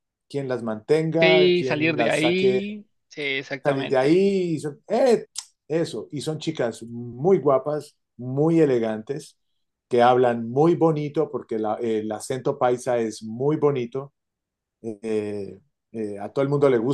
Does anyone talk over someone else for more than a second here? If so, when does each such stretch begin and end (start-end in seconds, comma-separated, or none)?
1.2-2.6